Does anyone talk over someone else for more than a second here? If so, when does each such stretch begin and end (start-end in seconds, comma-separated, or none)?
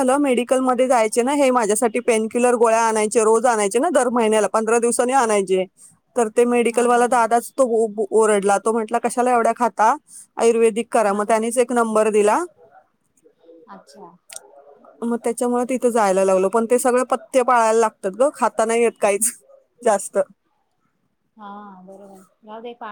none